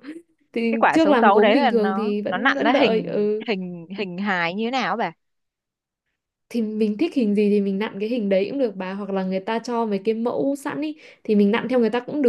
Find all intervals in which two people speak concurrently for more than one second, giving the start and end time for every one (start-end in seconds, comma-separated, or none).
0.7-3.5